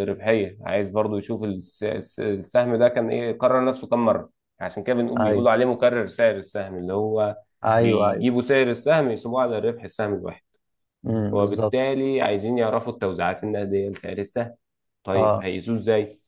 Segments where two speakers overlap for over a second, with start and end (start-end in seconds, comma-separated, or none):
none